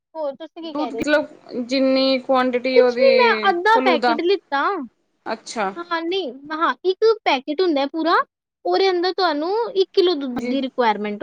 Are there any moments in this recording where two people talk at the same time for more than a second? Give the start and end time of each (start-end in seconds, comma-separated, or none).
none